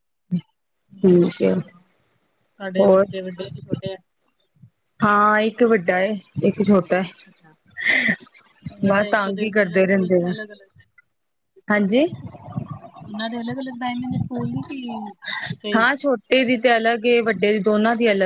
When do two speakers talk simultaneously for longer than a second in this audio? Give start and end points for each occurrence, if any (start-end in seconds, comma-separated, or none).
8.9-10.3